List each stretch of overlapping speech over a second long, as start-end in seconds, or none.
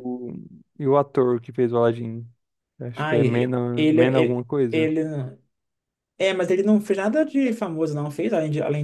2.9-4.9